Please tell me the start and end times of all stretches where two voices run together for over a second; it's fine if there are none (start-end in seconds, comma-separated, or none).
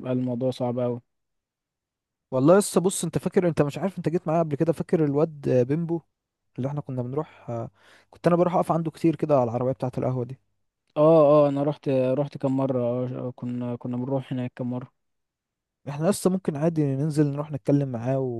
none